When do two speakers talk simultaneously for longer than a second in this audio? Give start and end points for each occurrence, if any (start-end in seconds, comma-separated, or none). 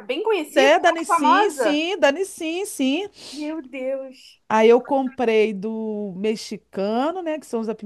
0.5-1.8